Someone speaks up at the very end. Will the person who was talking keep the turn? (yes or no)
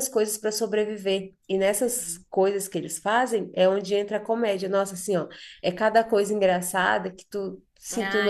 no